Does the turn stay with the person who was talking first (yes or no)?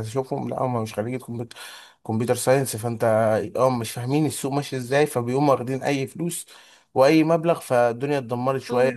no